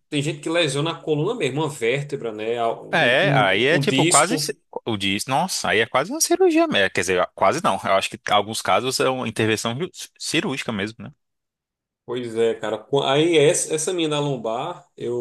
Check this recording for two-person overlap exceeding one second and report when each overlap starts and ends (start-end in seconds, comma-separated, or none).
2.9-4.5